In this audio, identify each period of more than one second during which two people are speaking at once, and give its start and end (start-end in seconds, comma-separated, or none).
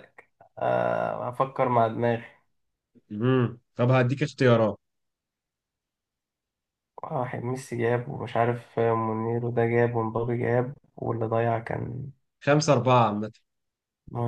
none